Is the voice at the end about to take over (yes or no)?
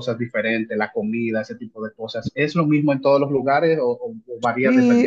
yes